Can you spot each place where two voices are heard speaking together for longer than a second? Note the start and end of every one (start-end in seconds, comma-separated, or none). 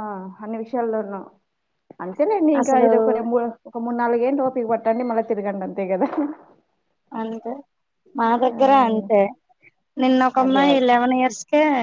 none